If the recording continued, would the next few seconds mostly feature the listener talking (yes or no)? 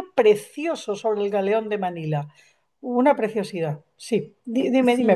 yes